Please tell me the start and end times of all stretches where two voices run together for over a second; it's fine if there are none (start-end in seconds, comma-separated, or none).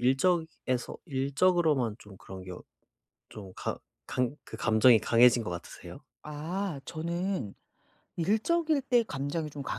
none